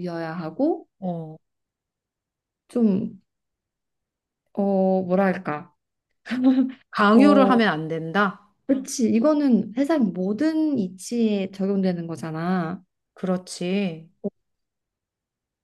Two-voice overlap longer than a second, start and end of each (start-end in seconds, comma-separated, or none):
none